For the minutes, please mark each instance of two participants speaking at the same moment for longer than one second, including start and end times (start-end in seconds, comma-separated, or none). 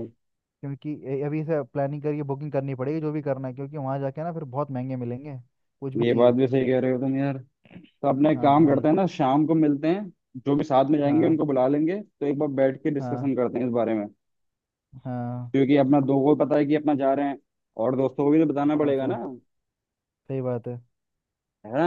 none